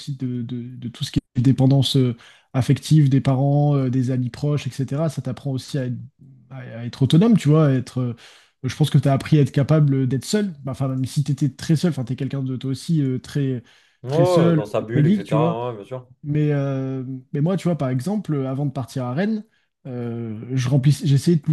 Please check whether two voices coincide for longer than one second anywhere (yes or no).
yes